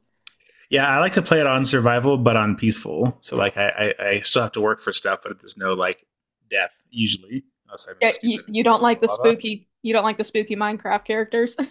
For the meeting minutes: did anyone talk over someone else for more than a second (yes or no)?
yes